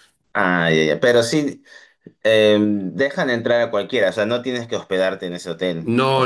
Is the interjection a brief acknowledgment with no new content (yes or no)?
no